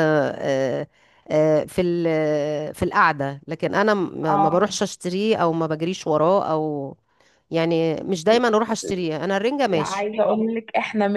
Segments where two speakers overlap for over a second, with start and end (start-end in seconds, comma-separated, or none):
none